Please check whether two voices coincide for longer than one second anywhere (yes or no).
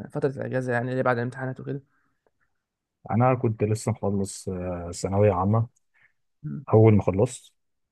no